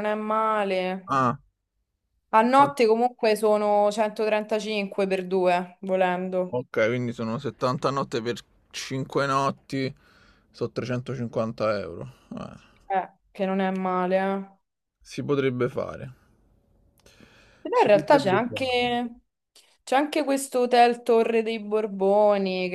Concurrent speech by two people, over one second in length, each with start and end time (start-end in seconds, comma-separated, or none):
17.7-19.0